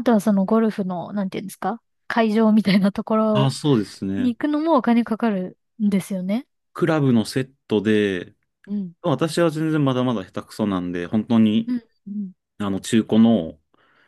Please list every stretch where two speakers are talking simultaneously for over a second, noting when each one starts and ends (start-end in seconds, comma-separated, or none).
none